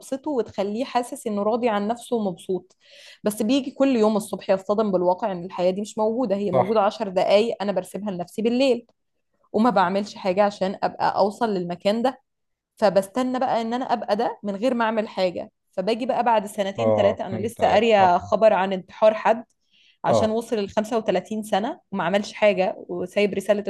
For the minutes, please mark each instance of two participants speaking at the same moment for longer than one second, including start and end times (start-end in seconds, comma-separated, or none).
16.8-18.1